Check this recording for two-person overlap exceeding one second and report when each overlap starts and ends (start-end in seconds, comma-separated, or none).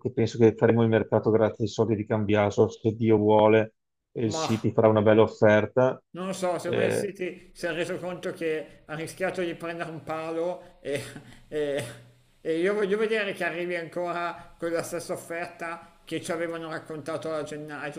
none